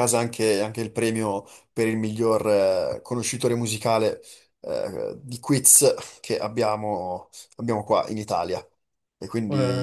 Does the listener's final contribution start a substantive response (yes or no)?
yes